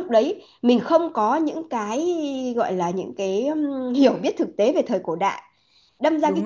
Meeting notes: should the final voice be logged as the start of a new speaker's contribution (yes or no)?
no